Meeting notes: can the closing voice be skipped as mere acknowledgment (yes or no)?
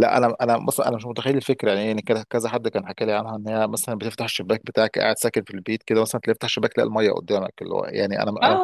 no